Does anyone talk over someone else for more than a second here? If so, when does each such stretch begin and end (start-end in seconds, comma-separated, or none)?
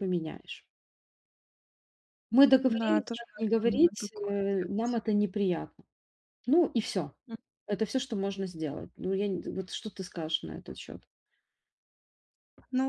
2.7-5.0